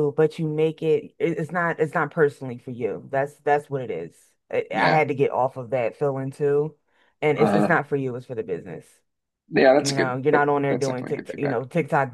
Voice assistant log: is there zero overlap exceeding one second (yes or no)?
no